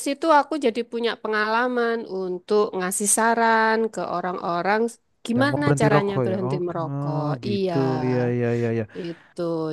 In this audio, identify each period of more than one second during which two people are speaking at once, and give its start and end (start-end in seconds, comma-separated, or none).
5.3-7.7